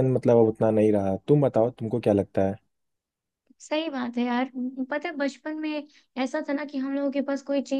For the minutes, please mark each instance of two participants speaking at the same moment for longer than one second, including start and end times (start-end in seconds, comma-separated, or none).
none